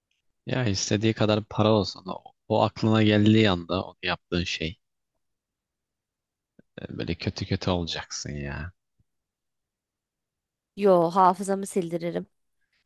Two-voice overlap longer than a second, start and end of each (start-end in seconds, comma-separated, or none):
none